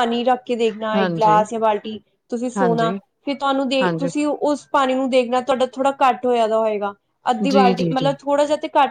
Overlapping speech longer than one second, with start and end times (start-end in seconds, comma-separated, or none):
none